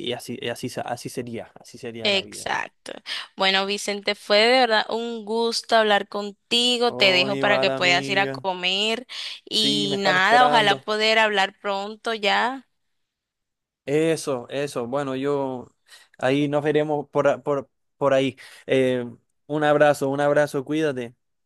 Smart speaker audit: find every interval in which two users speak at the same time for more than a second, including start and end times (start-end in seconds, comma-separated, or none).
6.8-8.5, 9.5-10.9